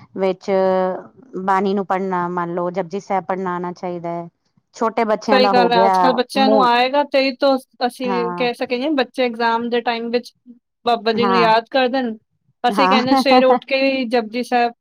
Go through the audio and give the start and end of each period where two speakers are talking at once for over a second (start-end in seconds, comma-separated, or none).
none